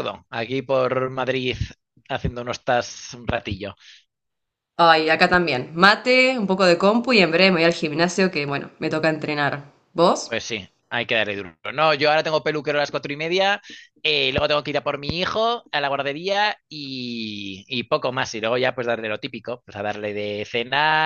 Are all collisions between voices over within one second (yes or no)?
yes